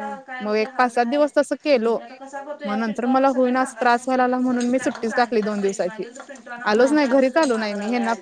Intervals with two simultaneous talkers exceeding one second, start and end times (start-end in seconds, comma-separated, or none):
2.7-6.0